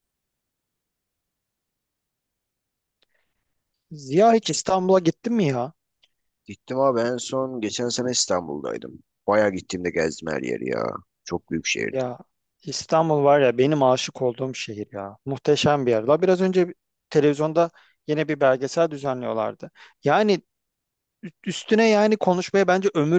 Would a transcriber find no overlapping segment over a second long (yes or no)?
yes